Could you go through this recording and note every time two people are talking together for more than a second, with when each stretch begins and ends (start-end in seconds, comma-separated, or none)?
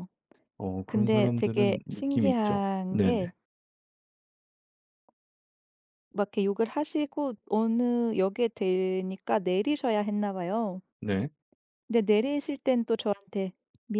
0.9-3.3